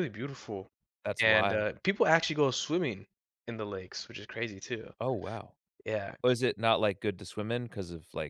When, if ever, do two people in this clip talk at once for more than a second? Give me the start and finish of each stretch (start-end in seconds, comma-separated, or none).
none